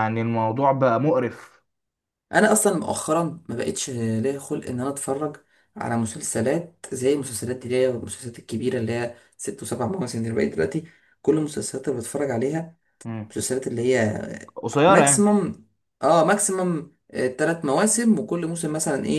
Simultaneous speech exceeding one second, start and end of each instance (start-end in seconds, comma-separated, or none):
none